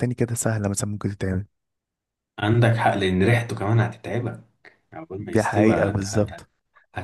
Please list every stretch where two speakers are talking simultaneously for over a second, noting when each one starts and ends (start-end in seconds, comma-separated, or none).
5.2-6.4